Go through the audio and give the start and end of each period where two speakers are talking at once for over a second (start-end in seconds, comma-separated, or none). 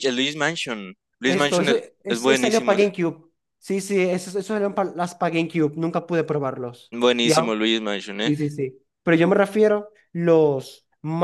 1.2-2.9